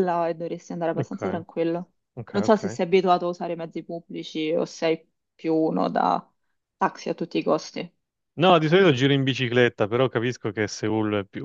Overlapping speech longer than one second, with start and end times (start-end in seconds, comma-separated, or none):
none